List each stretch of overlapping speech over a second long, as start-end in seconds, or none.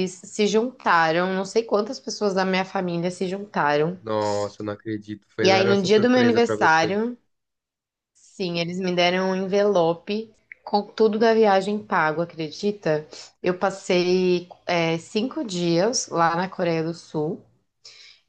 5.4-7.0